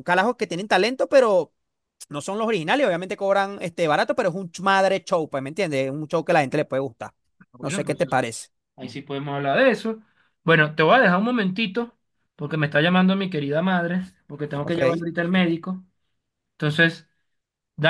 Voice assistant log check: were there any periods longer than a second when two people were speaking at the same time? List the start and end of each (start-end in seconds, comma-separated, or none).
none